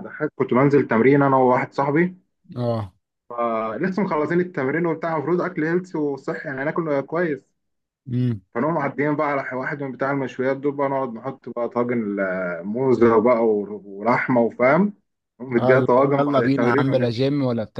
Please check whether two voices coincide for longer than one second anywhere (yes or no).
yes